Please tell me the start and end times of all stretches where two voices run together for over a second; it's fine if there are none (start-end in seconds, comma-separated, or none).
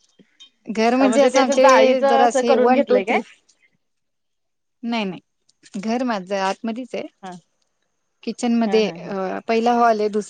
1.1-3.2